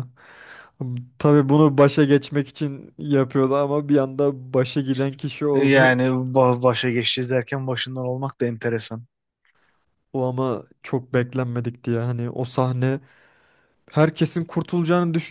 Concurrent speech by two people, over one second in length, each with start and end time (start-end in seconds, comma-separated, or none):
none